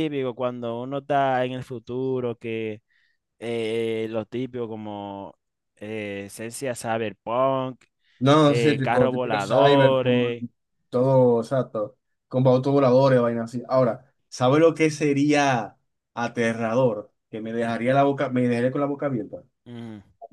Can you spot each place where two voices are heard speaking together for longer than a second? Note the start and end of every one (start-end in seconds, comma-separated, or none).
8.5-10.4